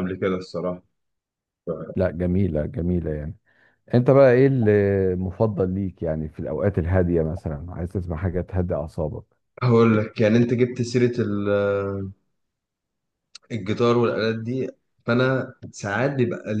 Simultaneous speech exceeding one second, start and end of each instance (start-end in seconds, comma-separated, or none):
none